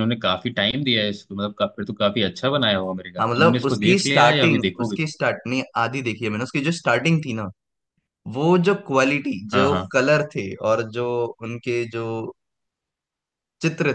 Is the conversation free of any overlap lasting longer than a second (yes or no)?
no